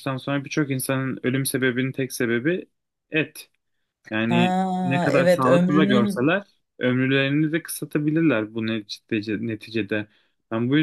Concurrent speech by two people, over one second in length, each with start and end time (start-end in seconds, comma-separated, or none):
4.3-6.3